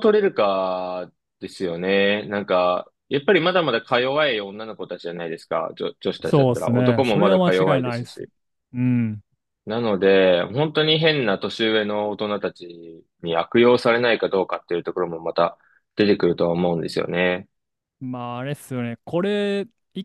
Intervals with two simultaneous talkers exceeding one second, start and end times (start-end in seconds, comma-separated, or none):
6.2-8.2